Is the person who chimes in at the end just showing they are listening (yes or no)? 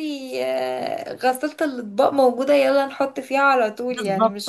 no